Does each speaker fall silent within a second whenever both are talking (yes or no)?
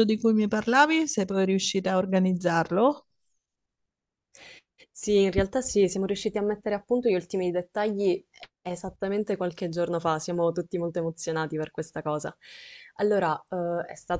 yes